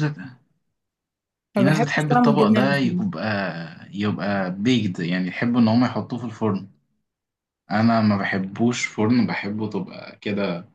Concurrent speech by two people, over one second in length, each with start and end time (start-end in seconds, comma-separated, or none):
1.6-3.2